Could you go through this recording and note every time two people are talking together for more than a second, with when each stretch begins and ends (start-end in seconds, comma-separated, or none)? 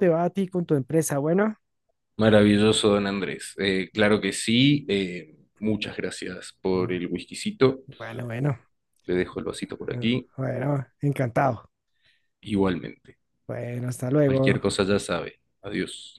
none